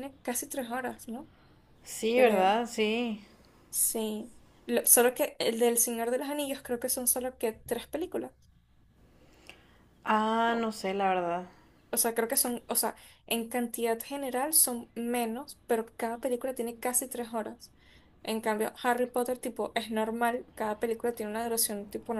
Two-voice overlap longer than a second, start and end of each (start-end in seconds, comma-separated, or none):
none